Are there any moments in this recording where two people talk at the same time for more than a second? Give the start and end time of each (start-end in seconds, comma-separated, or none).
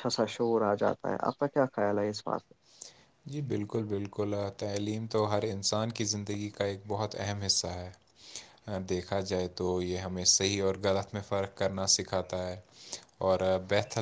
none